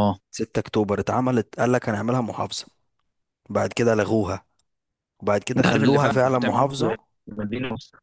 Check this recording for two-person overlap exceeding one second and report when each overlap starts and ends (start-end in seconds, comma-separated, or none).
5.6-7.0